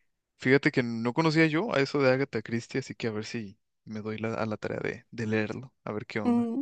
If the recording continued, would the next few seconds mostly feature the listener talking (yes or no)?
yes